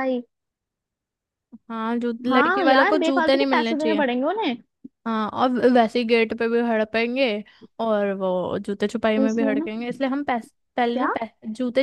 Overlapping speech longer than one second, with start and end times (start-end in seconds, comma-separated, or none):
2.3-4.0